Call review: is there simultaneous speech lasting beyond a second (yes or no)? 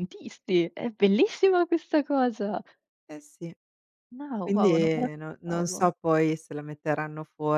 yes